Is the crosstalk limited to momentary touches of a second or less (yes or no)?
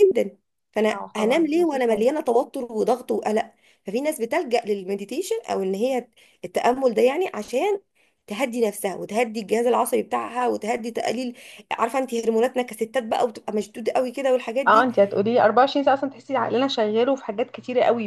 no